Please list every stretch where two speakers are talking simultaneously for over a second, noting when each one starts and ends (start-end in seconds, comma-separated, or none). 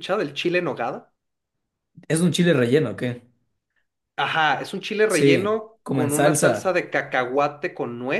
5.1-6.8